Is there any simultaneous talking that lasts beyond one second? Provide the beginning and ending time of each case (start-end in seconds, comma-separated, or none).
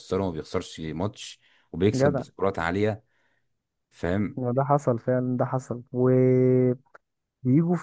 none